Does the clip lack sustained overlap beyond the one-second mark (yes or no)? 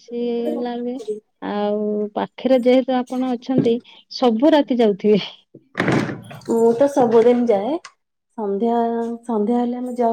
yes